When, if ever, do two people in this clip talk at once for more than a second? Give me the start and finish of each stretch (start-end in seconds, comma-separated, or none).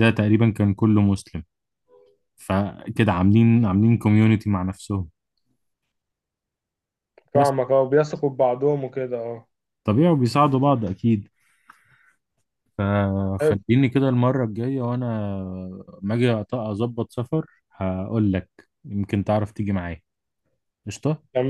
none